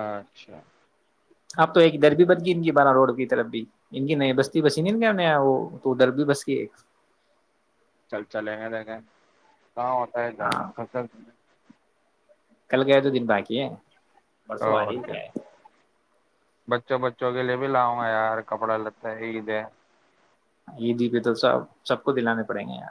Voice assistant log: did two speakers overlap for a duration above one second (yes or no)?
no